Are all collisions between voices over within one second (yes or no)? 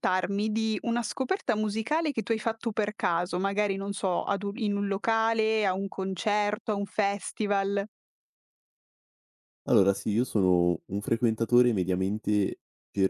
yes